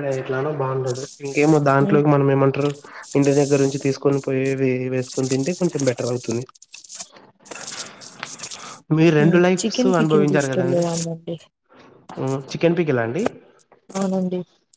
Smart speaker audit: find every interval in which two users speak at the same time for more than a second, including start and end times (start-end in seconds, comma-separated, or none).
9.2-10.8